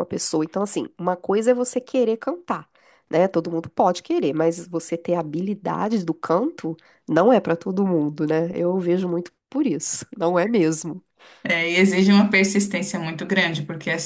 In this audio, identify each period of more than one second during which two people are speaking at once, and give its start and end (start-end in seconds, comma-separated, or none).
none